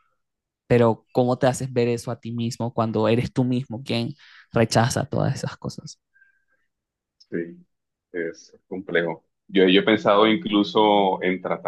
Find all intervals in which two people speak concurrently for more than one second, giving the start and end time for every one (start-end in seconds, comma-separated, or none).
none